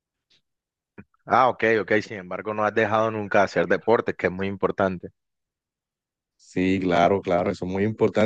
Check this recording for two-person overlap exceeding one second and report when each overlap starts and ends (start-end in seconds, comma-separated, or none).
none